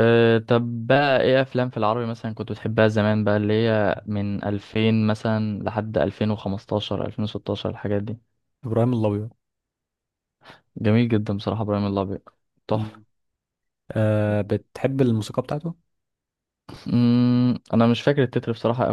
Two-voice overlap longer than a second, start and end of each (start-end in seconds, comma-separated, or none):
none